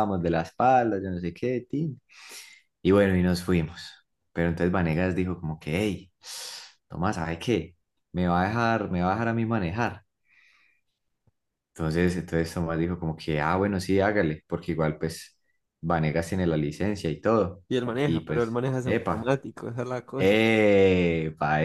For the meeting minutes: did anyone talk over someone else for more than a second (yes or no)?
yes